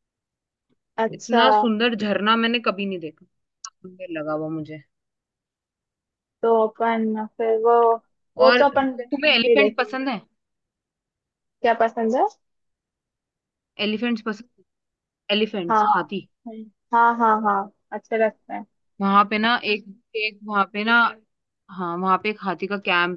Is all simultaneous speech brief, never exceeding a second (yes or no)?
no